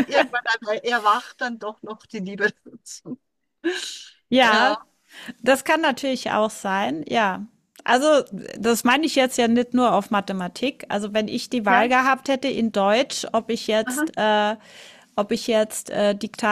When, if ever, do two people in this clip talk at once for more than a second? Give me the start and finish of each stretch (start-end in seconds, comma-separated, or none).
none